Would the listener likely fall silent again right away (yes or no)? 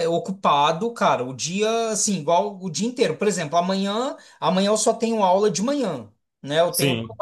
yes